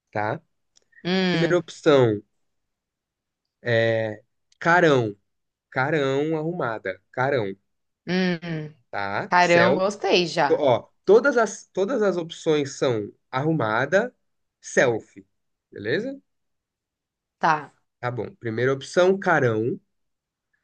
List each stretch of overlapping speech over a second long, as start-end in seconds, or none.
none